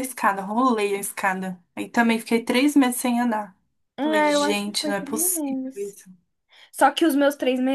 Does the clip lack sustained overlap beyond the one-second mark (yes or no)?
no